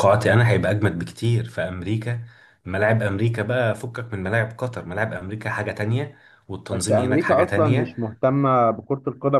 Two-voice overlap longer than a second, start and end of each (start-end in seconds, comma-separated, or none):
6.7-8.0